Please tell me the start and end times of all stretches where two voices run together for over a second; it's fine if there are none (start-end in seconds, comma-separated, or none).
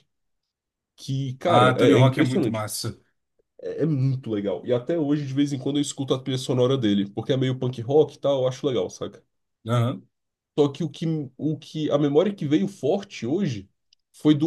1.5-2.7